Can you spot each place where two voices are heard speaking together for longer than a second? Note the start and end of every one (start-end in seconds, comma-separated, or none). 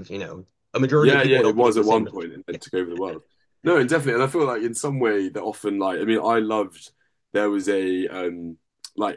0.9-2.6